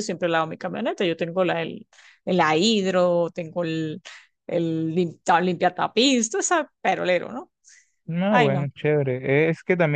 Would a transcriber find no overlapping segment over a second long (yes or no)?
yes